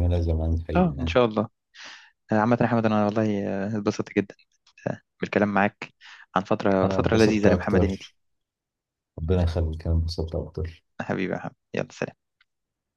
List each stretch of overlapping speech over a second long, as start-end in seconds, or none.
6.8-8.1